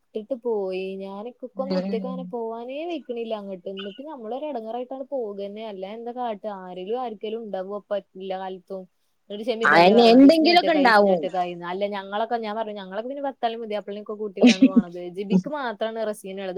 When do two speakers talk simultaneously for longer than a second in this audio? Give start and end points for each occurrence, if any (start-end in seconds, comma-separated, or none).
9.7-11.2